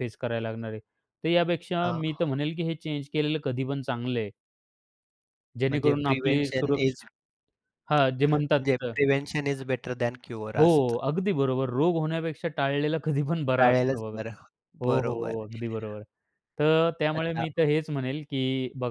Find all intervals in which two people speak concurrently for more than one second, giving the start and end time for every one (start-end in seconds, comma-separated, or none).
5.7-7.0